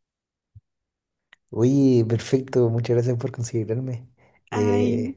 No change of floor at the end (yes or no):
yes